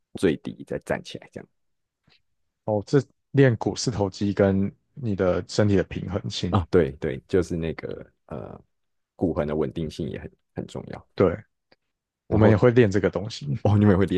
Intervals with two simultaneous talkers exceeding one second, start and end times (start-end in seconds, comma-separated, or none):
none